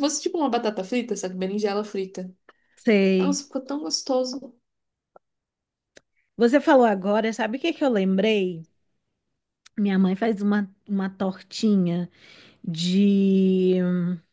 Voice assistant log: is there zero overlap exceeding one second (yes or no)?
yes